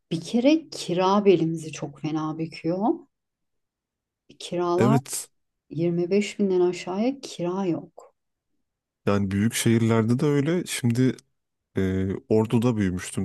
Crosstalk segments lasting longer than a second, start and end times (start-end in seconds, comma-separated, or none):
none